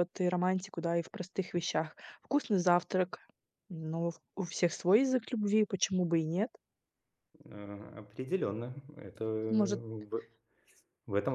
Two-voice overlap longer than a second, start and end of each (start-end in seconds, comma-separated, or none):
none